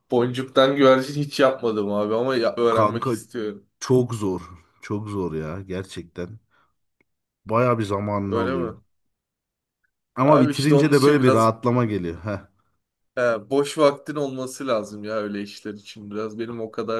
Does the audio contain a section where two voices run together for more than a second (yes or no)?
yes